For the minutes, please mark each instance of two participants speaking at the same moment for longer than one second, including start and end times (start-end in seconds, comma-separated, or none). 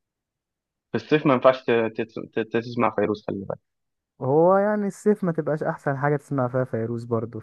none